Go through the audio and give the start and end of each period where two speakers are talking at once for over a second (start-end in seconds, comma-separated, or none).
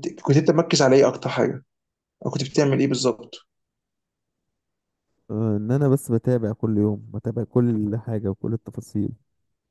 none